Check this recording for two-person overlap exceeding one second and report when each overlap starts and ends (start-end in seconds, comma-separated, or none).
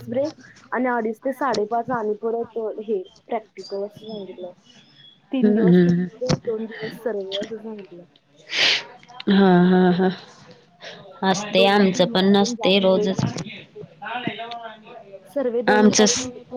11.5-13.4